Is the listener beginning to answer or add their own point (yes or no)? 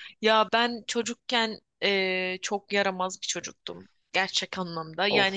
no